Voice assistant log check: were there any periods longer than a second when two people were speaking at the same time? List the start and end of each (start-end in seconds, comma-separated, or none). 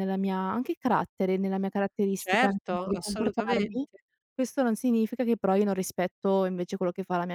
2.2-3.9